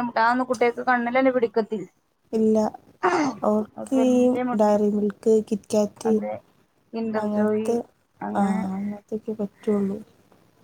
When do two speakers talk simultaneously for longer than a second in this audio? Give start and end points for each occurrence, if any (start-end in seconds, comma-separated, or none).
none